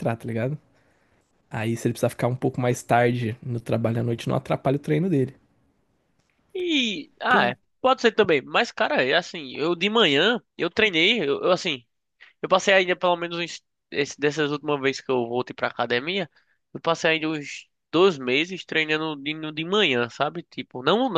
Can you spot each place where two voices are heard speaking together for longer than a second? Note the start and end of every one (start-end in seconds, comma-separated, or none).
none